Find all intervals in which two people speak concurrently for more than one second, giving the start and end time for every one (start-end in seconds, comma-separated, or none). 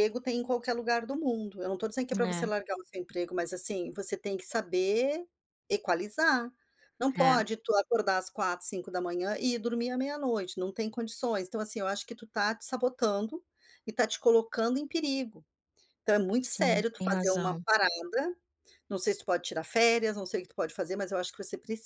16.4-17.6